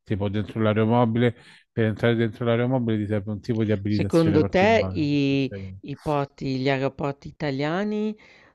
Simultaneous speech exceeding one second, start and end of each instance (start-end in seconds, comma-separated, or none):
3.9-5.5